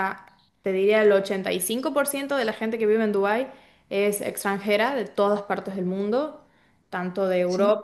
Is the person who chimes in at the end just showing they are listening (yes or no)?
yes